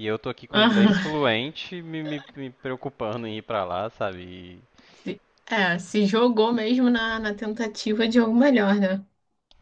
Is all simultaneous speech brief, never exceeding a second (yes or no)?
yes